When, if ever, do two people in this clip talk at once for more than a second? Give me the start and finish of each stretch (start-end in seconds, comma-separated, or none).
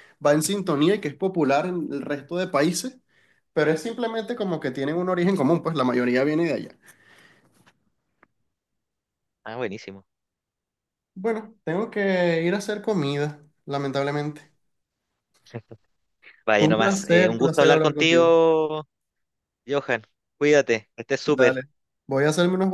16.6-18.3